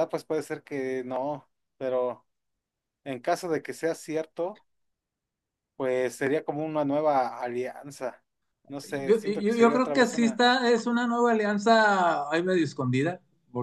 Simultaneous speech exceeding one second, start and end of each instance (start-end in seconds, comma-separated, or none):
9.0-10.4